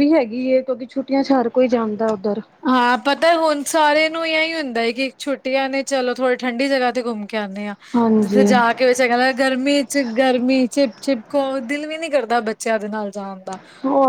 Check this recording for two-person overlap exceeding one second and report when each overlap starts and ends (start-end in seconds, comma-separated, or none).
none